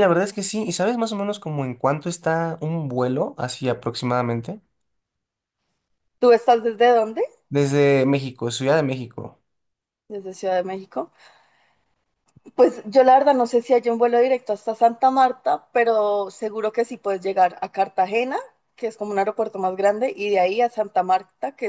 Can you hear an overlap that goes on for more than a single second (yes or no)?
no